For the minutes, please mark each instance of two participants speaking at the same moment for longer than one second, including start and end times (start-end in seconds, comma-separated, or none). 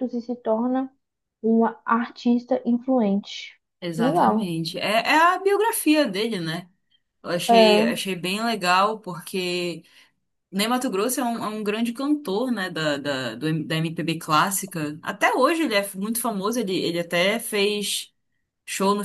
none